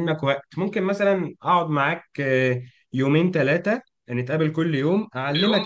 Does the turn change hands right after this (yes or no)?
no